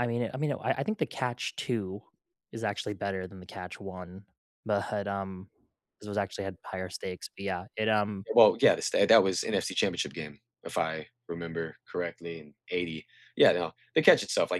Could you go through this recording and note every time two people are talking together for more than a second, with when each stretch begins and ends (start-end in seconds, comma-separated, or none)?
none